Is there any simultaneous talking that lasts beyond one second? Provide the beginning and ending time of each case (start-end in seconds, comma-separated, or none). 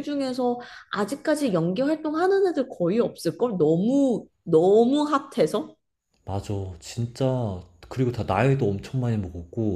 none